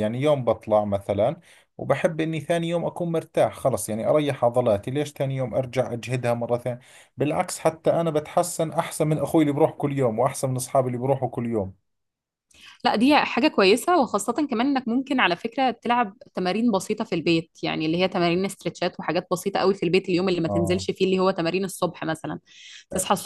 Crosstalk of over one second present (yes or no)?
no